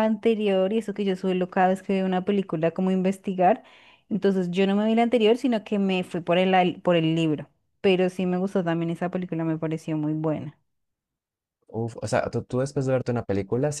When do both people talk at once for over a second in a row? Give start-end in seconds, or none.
none